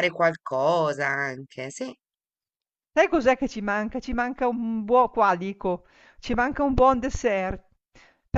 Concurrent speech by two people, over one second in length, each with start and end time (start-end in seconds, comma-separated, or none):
none